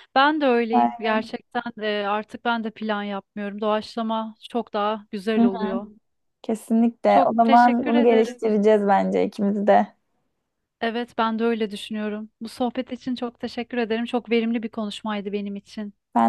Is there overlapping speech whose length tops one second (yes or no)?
yes